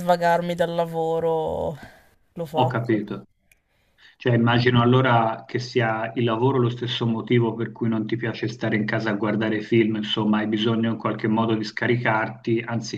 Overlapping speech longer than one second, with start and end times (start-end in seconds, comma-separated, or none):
none